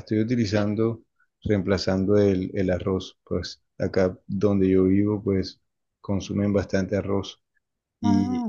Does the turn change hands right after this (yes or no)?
no